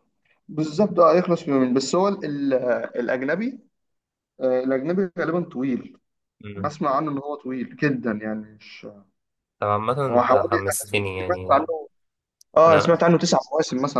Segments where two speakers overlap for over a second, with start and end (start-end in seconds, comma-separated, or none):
10.1-11.7